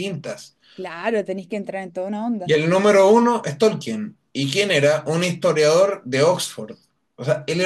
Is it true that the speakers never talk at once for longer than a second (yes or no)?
yes